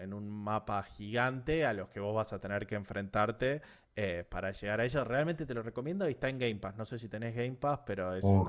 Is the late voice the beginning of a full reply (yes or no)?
yes